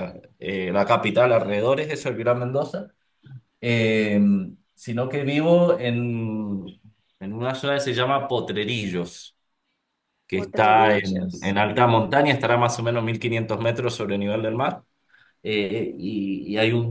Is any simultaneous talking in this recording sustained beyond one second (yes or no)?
yes